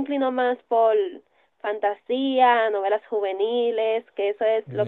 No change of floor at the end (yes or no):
yes